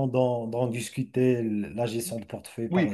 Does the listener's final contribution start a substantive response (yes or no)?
yes